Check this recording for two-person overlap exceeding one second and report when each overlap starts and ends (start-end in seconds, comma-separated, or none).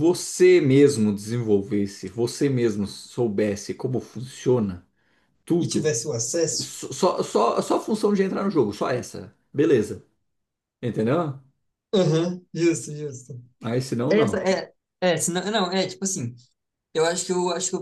none